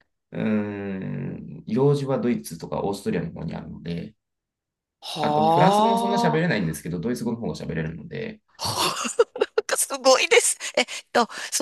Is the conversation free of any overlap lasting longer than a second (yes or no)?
no